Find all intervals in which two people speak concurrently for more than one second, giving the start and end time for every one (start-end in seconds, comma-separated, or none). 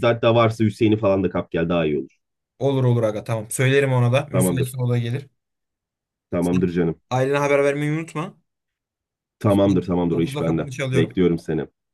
9.5-11.2